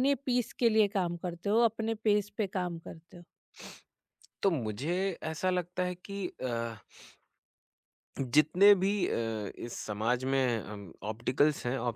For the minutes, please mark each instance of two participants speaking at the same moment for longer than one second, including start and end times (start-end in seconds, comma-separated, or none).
none